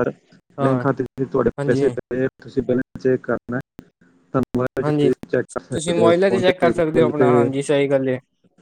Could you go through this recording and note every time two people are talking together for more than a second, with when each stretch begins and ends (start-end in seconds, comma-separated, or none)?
5.7-7.3